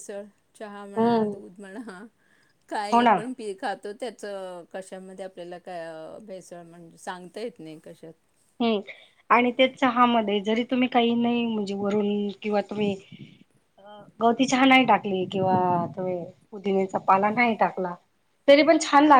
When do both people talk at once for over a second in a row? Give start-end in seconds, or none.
none